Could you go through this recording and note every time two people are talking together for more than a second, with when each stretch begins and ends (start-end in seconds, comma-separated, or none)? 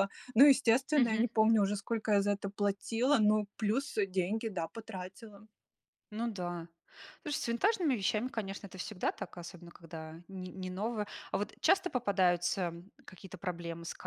none